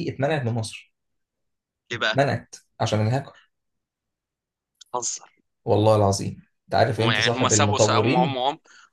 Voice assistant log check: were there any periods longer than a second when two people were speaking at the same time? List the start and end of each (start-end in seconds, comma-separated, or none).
7.0-8.4